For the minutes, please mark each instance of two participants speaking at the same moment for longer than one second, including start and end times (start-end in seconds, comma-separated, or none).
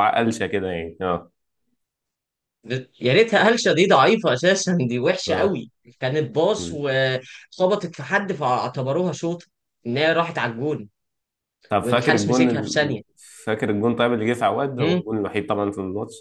11.8-13.0